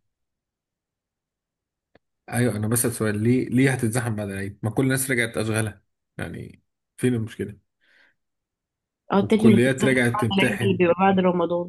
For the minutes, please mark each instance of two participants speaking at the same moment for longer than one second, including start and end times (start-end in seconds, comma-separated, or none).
9.2-10.8